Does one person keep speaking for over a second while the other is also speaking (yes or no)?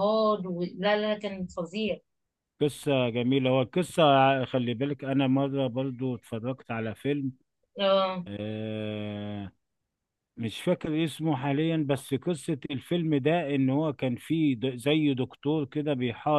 no